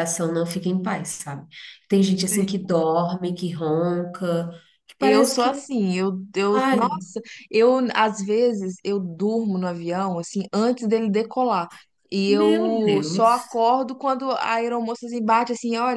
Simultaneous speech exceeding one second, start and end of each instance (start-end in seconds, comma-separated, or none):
12.3-13.6